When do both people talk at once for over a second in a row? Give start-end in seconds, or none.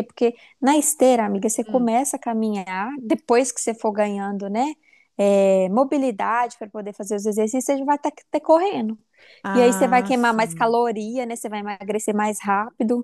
9.5-10.8